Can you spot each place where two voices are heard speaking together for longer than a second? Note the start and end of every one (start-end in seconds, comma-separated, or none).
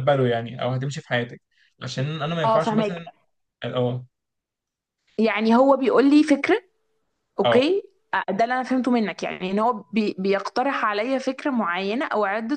none